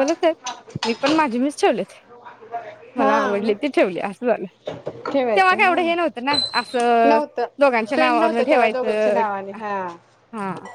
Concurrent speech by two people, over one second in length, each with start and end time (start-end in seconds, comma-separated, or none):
8.0-9.2